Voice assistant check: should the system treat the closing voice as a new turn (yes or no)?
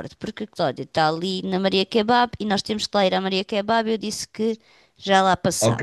yes